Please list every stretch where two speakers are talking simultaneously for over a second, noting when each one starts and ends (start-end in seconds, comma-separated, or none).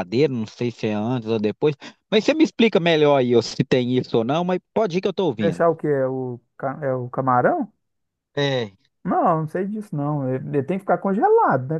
none